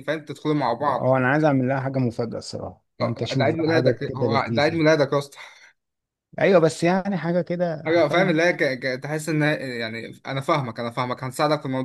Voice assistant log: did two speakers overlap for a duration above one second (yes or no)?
yes